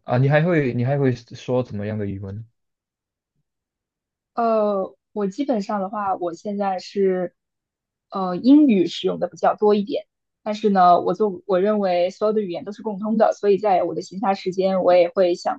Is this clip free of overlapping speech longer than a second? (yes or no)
yes